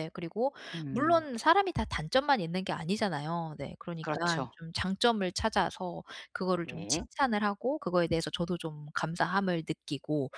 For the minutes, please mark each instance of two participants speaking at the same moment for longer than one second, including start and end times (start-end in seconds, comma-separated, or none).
none